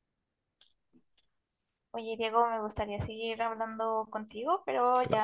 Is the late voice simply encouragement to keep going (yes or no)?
yes